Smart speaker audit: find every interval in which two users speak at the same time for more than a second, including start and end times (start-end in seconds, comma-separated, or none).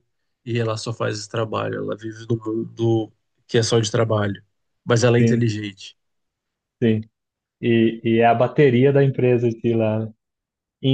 none